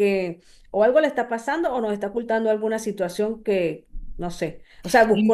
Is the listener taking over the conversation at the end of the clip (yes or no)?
no